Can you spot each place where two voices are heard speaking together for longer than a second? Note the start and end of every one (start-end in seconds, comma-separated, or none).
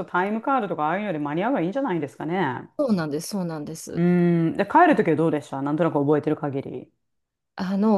none